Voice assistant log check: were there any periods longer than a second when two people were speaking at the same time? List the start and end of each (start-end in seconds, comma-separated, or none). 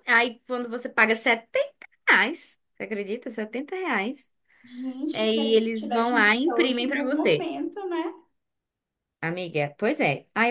5.1-7.5